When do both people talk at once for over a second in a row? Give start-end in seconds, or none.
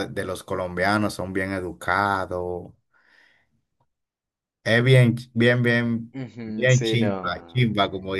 6.1-7.7